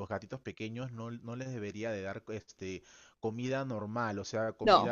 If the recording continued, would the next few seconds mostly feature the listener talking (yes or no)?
no